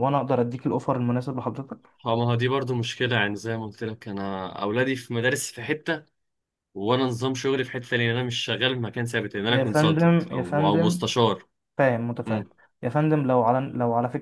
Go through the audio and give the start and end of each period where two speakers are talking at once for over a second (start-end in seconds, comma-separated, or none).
9.5-11.1